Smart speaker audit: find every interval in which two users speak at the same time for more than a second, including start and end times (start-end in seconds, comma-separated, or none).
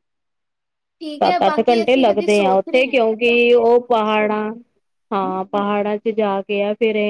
1.2-2.9